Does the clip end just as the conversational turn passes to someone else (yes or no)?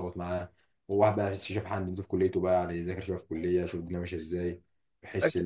yes